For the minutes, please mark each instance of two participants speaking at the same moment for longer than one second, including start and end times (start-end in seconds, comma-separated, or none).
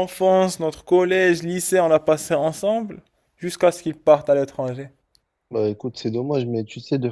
none